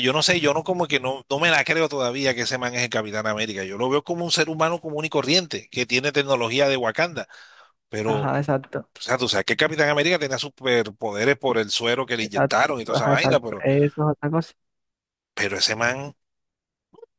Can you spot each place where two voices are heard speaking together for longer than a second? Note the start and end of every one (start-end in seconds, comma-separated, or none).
12.2-13.6